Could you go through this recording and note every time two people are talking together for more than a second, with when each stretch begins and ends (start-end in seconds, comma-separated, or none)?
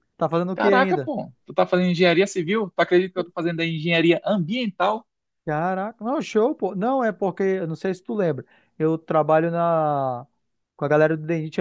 none